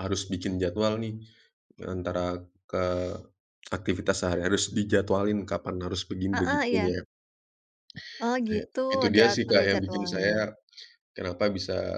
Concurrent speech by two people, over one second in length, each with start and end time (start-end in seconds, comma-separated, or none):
8.5-10.3